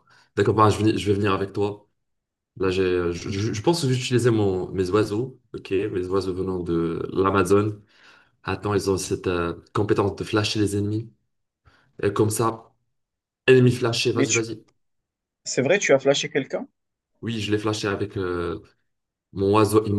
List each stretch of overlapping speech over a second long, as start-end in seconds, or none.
none